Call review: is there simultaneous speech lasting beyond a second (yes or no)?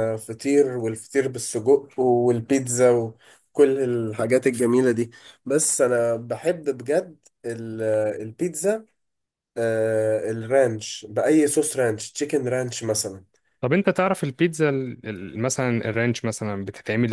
no